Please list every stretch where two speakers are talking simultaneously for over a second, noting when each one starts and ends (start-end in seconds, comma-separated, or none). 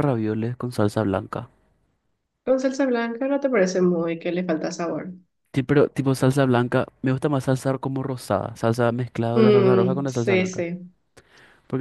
9.3-10.7